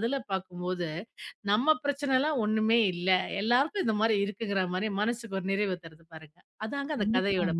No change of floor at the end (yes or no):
no